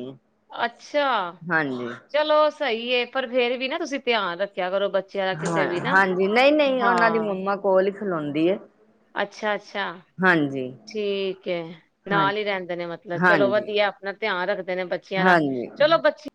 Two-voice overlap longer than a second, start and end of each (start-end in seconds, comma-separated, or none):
none